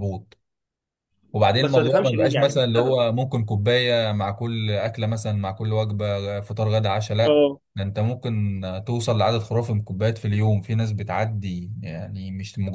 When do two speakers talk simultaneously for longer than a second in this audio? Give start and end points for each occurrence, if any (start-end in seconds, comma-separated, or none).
1.6-3.0